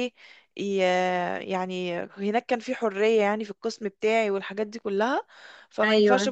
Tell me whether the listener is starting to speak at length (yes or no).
no